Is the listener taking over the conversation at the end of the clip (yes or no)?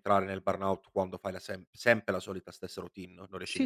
yes